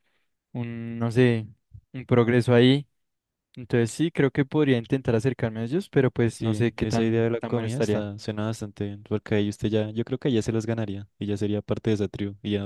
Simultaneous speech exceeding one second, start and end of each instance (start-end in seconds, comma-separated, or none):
6.3-8.1